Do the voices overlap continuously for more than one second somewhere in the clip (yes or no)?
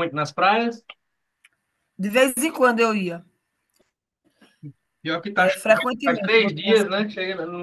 yes